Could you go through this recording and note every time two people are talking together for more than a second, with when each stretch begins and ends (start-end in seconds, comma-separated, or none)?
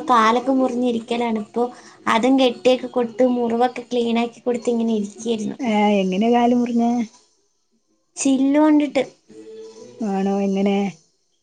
none